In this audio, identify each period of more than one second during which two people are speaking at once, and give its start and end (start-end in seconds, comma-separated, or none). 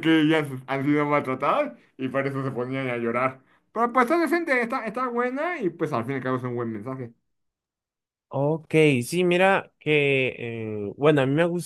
none